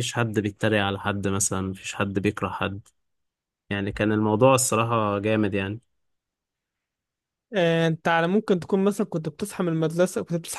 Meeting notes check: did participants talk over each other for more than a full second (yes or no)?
no